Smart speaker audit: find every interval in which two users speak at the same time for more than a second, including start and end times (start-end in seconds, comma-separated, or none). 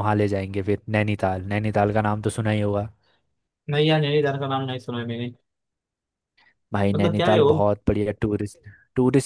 none